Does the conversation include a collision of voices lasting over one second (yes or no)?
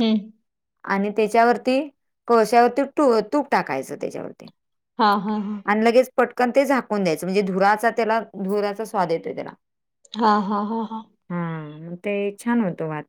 no